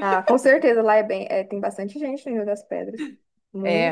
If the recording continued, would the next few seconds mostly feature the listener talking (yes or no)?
yes